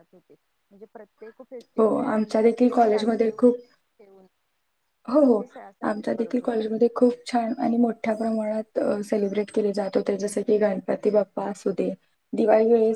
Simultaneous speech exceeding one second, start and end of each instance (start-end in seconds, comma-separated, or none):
1.8-3.5